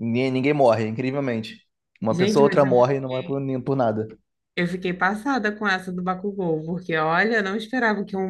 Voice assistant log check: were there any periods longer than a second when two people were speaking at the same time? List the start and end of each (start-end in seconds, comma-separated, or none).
2.1-3.4